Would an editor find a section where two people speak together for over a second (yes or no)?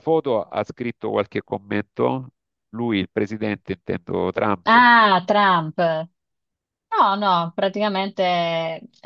no